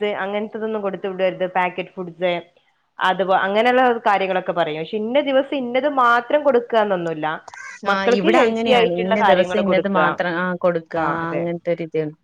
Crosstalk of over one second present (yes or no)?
yes